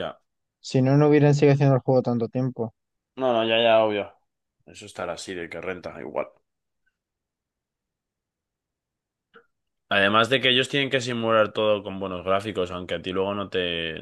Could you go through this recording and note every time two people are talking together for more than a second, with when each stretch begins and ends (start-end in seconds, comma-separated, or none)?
none